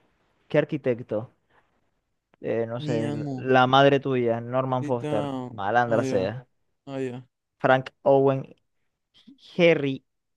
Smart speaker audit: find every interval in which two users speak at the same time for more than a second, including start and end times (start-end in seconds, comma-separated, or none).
4.8-6.3